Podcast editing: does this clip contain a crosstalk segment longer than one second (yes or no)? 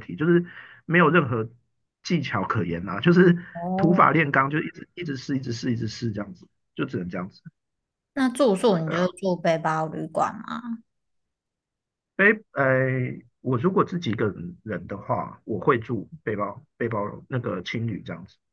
no